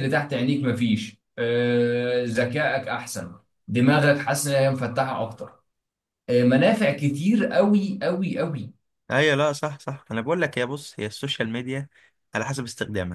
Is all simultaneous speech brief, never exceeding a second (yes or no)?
yes